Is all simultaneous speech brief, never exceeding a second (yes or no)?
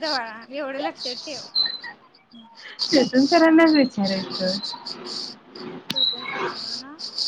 yes